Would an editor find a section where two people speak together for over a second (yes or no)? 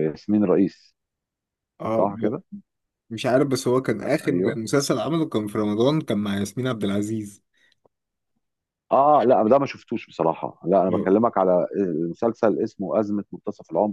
no